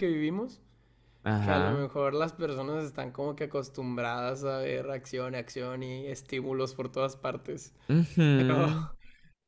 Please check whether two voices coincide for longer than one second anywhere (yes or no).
no